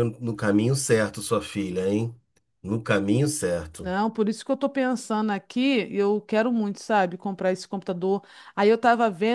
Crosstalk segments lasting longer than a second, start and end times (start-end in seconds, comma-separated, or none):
none